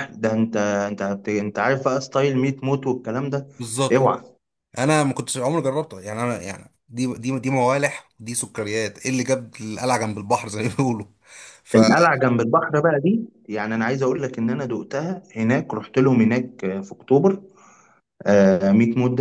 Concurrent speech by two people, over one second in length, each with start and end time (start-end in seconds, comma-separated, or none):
none